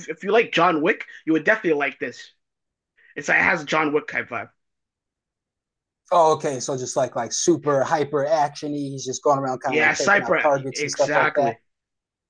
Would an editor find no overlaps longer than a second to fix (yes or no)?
no